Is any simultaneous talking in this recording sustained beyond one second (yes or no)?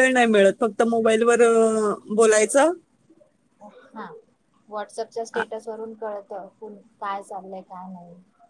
no